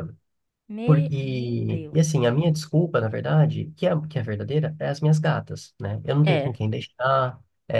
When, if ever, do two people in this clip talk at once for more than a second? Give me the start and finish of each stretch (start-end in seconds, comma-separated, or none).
0.8-2.2